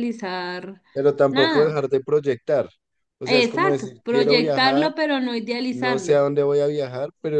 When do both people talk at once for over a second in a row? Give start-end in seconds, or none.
3.3-4.9